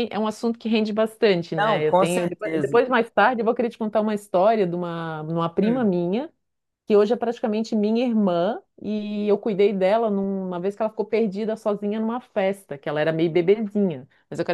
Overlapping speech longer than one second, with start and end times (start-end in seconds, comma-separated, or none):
1.6-2.8